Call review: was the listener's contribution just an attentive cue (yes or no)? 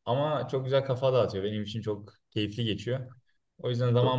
yes